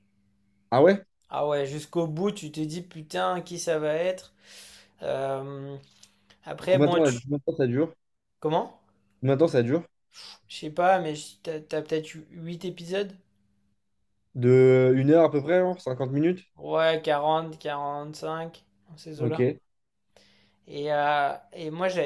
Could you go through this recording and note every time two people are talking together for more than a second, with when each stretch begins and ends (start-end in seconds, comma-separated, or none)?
none